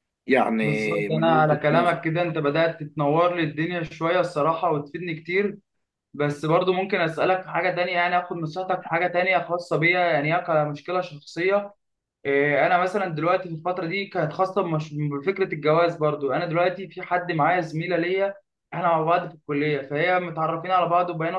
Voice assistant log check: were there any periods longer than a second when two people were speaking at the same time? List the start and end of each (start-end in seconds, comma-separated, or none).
0.6-2.0